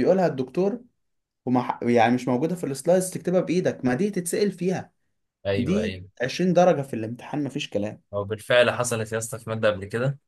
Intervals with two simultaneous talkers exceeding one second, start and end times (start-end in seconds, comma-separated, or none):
none